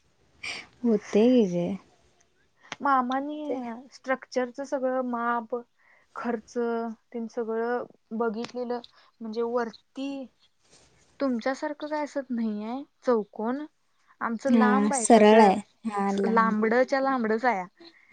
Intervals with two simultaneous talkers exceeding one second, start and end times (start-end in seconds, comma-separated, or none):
14.5-16.6